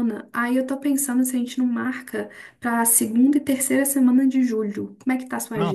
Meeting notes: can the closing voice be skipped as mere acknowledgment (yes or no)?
no